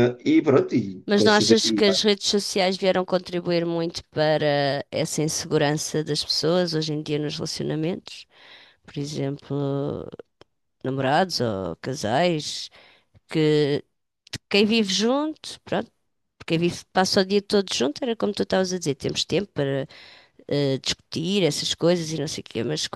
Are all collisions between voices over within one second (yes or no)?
yes